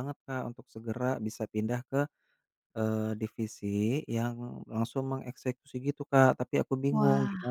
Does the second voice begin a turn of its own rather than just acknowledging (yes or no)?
no